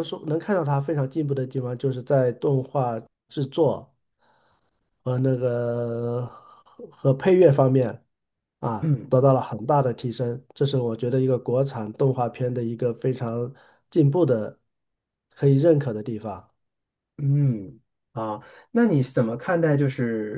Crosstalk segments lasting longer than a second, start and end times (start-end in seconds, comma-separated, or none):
none